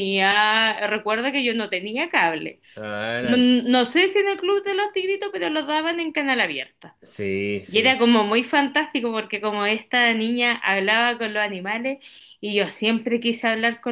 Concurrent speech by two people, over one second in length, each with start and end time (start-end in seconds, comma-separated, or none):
none